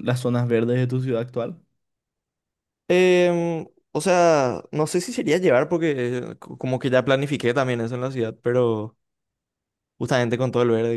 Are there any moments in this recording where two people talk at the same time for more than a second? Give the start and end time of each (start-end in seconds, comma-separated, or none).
none